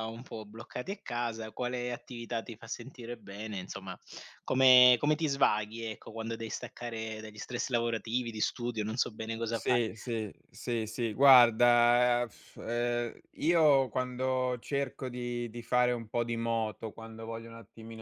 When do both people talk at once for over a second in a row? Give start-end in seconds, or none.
none